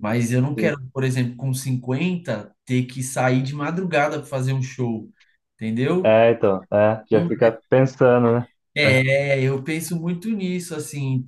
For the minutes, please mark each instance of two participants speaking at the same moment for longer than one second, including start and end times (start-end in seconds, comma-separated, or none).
none